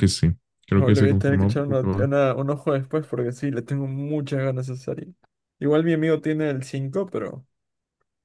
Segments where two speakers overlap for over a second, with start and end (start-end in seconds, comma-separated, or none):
0.7-2.1